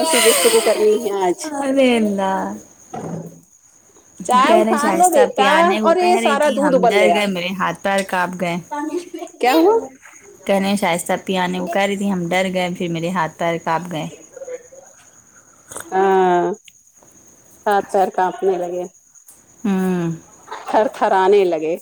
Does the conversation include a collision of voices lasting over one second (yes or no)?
yes